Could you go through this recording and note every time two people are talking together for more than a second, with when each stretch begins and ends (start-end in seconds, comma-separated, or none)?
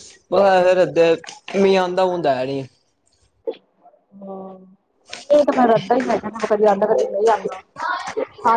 none